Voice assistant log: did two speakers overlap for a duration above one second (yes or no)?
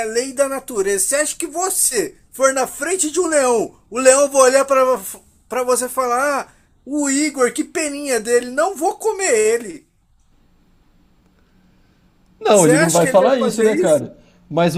yes